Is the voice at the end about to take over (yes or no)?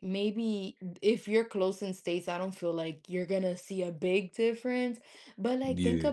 no